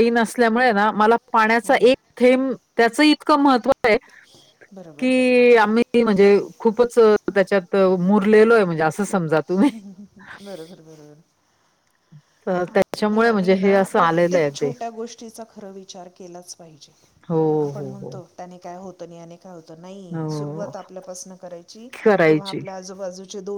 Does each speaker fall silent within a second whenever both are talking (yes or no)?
no